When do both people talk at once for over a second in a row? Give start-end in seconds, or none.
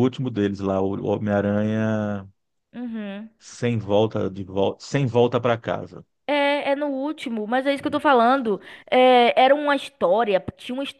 none